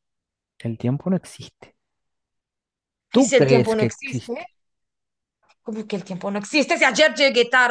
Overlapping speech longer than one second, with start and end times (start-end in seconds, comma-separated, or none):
3.1-4.3